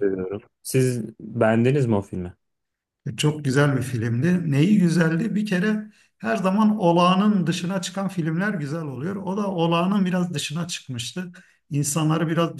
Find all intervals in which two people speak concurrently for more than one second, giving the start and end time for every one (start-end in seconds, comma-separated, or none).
none